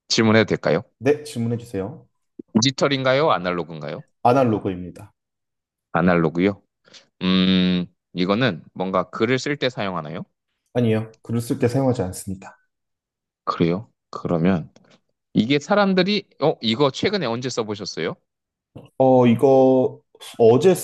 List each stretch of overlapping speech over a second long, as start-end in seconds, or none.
none